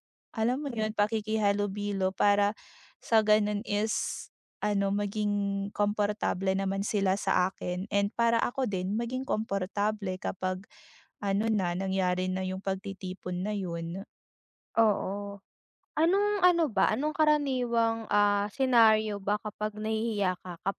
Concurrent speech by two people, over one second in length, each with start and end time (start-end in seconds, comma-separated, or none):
none